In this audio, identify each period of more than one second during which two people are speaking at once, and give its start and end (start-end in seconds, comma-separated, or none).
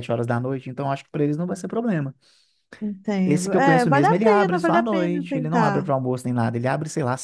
3.2-5.9